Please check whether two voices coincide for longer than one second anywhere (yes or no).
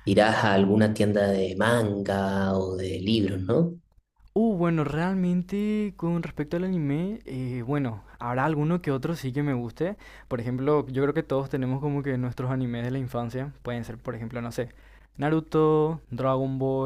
no